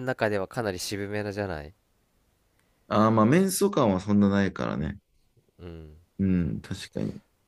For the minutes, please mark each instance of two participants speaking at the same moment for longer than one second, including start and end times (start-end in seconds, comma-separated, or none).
none